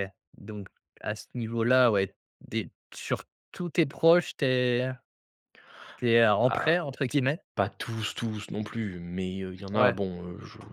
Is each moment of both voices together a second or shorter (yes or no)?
yes